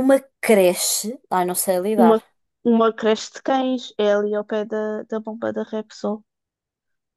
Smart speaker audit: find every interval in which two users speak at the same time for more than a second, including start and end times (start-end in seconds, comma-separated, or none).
none